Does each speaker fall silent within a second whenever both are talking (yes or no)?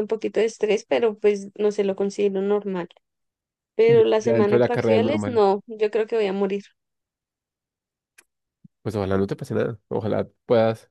no